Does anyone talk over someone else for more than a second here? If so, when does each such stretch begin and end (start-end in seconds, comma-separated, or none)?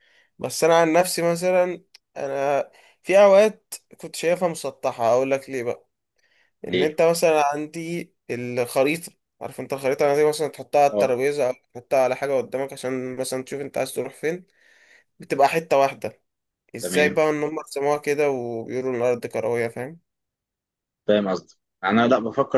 none